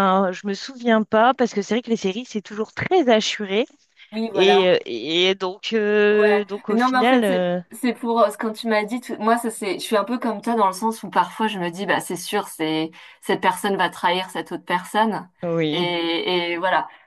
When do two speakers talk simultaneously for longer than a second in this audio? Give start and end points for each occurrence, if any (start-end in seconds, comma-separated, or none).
6.1-7.6